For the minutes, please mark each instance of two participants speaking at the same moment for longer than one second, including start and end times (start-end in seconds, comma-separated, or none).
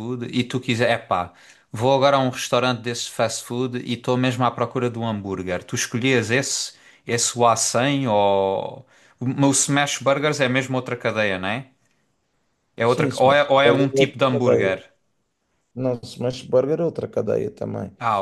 12.8-14.8